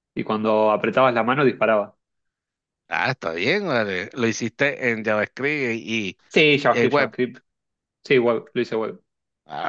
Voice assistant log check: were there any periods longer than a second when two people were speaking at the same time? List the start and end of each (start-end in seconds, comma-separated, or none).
none